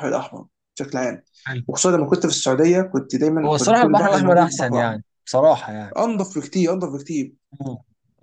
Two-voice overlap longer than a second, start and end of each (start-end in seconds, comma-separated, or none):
3.4-5.0